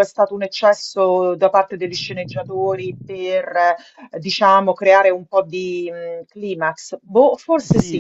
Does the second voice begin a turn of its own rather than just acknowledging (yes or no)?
yes